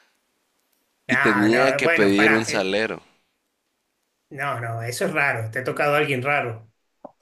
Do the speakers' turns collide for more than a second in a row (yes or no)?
yes